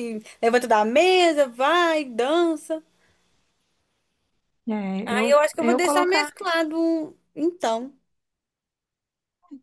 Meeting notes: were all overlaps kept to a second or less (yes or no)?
no